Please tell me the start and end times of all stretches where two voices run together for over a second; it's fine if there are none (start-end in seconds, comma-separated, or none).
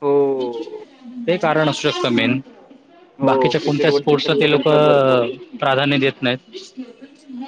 3.2-4.7